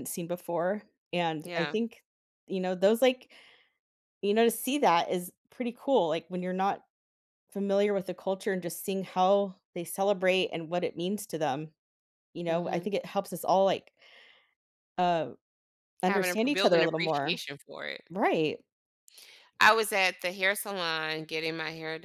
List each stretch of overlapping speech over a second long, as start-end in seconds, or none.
16.0-17.4